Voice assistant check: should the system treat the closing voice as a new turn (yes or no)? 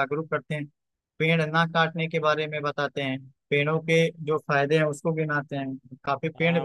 yes